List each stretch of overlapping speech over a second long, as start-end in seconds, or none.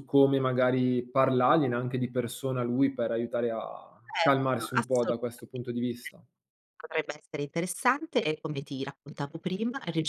4.0-5.6